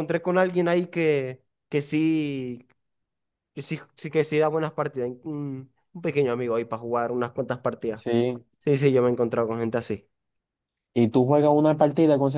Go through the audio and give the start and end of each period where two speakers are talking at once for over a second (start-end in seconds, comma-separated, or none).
none